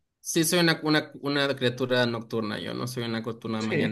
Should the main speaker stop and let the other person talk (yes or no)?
yes